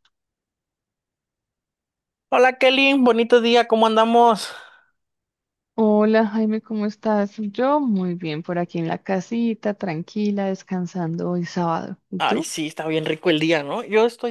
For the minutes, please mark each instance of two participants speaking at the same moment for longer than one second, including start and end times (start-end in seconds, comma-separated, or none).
none